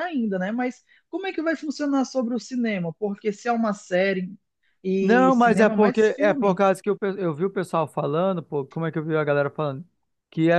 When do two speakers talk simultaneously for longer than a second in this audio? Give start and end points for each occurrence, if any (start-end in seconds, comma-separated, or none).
5.0-6.6